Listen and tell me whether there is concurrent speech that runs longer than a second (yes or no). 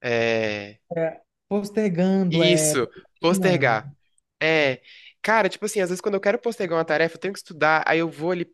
yes